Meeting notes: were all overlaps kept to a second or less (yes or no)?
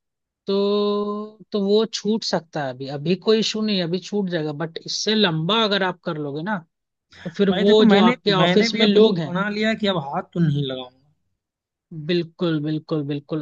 no